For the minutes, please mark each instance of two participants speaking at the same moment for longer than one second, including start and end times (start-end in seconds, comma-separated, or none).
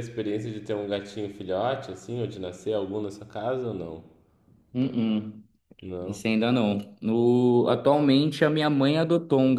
none